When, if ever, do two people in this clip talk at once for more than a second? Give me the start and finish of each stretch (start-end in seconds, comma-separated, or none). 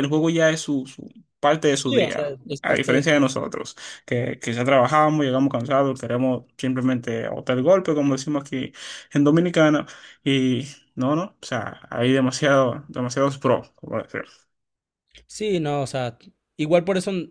1.7-3.1